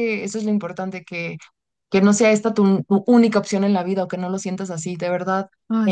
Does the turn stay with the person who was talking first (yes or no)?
yes